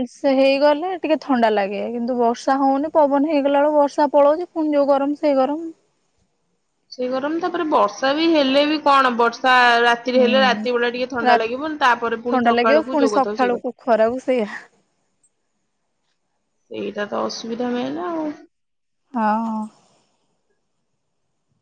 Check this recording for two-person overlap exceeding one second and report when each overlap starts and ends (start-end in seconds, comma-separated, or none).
12.3-14.2